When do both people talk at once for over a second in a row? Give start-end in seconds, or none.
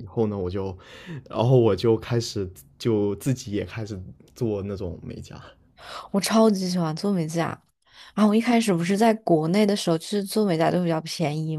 none